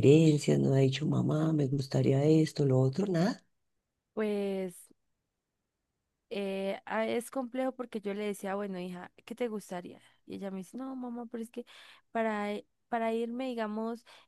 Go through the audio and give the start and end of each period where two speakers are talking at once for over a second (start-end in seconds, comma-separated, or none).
none